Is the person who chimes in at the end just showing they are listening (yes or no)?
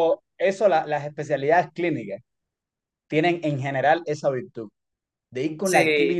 yes